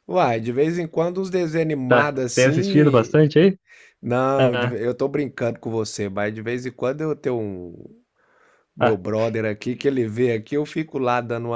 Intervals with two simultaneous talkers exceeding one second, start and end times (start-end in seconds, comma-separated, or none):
1.9-3.1